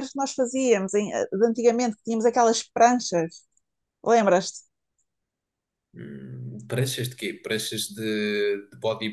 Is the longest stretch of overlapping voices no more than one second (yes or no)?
yes